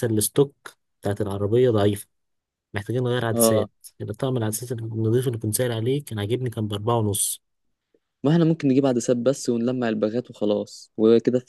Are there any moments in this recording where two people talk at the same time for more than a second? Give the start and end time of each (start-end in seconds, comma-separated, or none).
none